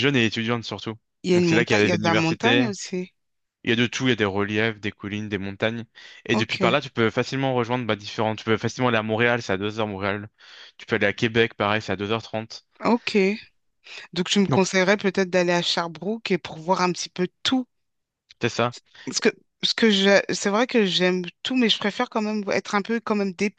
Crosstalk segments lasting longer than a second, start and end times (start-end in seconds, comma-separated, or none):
1.3-2.7